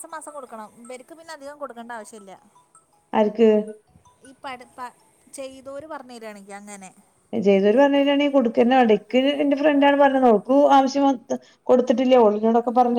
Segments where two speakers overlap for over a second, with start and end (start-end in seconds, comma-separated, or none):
none